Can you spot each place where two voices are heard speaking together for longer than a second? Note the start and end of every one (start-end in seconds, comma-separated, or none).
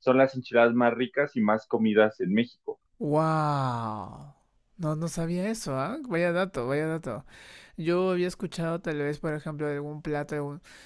none